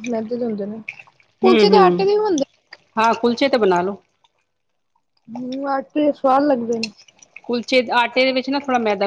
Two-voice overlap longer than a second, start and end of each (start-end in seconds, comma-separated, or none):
none